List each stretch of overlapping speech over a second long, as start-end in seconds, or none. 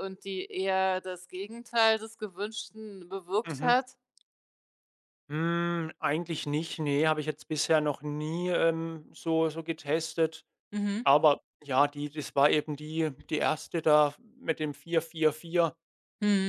none